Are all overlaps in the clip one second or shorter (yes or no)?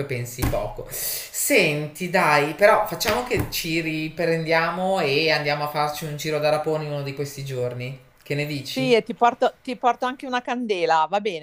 yes